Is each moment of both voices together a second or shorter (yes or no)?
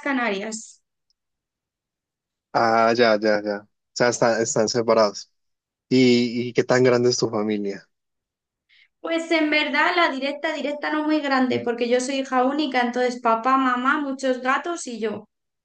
yes